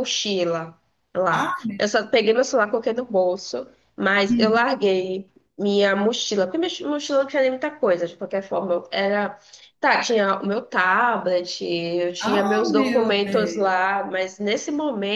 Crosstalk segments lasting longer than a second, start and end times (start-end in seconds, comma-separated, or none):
12.2-13.9